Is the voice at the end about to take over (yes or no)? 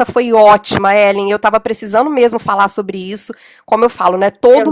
no